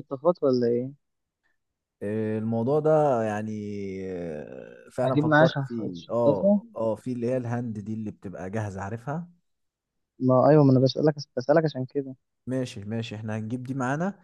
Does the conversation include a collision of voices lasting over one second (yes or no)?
yes